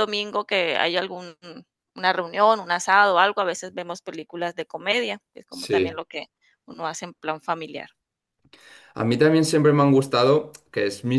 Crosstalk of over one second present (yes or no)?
no